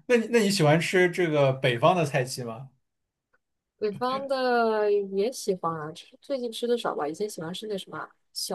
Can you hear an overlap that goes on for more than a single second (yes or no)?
no